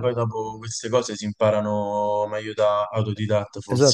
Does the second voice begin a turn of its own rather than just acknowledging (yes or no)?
yes